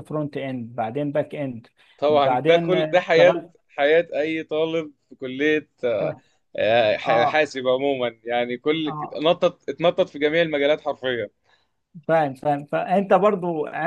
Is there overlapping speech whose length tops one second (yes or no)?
yes